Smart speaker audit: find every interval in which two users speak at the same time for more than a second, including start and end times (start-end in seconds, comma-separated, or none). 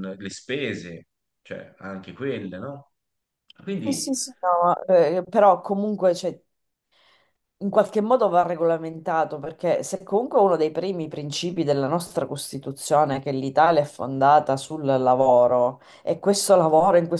none